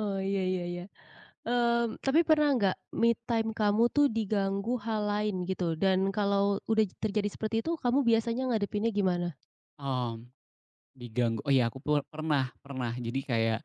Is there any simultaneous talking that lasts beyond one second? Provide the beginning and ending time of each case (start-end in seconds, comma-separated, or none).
none